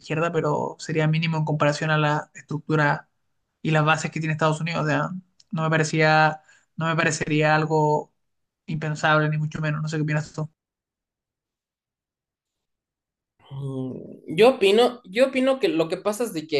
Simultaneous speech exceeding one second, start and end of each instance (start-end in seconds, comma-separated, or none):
none